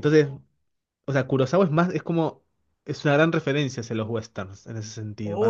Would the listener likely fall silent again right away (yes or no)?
no